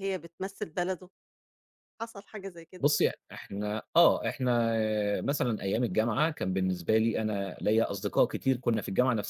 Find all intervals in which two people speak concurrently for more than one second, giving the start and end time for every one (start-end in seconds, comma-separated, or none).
none